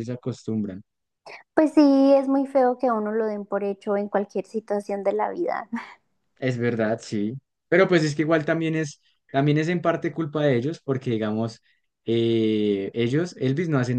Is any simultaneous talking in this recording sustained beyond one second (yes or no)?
no